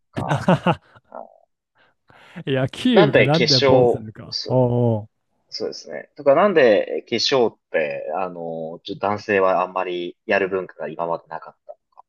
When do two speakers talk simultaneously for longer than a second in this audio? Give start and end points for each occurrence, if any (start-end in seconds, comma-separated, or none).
2.9-4.6